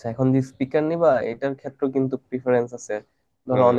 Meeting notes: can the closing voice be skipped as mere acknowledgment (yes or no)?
yes